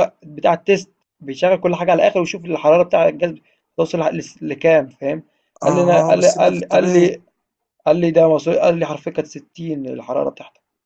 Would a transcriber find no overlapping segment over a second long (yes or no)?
no